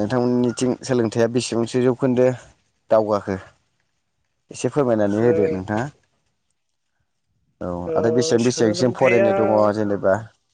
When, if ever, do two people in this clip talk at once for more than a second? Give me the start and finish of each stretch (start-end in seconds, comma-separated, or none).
7.9-9.3